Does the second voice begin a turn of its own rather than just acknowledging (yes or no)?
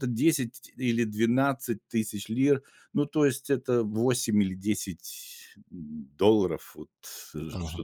yes